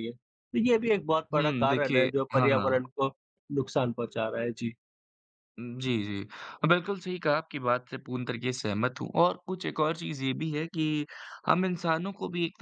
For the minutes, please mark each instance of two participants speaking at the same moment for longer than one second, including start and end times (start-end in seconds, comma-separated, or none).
1.4-2.8